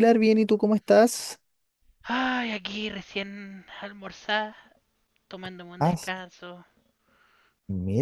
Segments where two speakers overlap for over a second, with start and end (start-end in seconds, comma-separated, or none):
none